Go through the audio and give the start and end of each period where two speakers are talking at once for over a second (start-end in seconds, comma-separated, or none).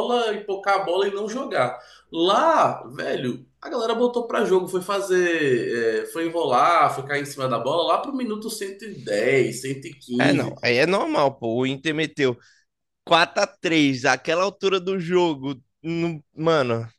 none